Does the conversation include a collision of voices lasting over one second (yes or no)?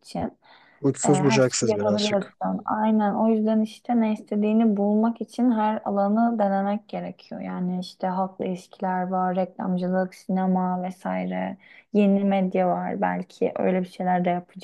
yes